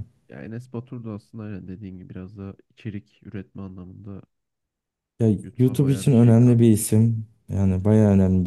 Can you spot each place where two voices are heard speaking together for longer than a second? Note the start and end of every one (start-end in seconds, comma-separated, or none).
5.4-6.9